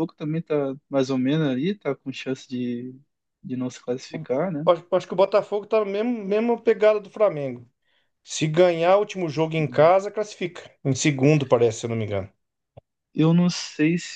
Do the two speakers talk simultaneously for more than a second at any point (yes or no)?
no